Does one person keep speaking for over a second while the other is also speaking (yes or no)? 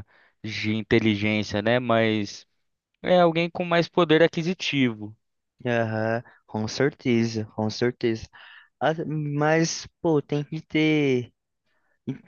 no